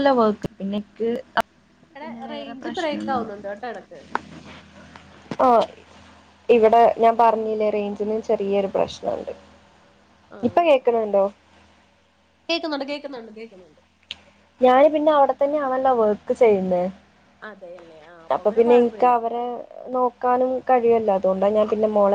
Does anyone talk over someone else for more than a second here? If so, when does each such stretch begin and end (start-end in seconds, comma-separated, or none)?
2.0-3.5